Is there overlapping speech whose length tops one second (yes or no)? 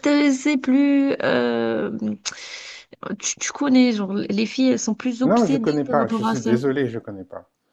yes